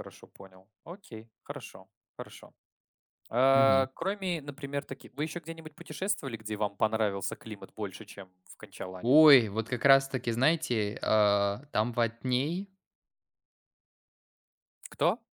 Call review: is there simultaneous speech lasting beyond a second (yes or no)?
no